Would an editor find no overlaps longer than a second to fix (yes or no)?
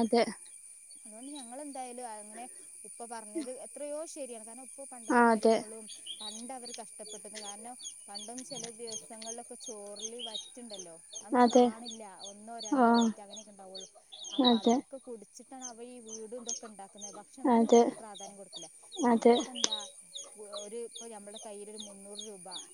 yes